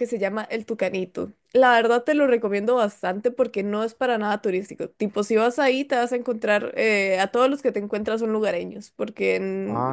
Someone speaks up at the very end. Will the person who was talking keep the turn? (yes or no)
yes